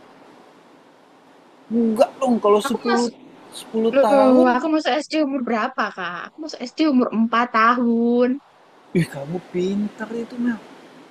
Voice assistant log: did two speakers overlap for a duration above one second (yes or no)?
no